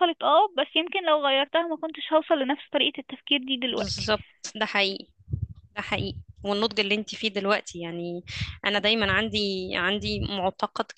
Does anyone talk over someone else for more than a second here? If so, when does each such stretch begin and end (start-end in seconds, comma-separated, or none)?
none